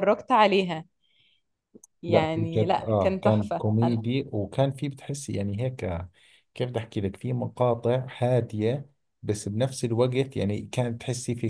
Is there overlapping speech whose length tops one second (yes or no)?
yes